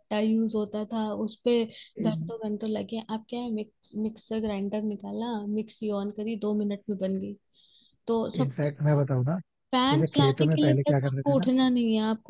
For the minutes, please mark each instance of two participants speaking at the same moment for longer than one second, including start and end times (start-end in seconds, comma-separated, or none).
9.9-11.5